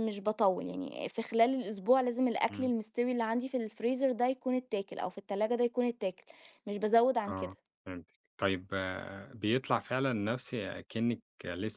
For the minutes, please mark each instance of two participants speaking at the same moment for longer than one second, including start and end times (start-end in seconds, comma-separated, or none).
none